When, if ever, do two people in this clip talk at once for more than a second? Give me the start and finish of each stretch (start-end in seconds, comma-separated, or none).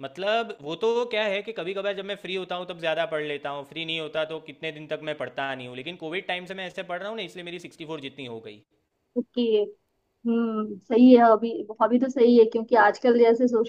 none